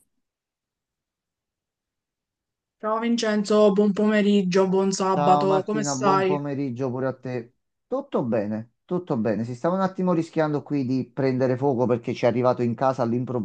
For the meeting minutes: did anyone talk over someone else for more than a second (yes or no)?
yes